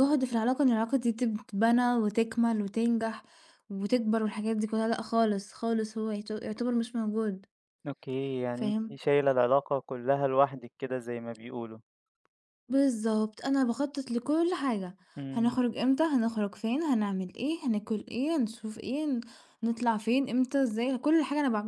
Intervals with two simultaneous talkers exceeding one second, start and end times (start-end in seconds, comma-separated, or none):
none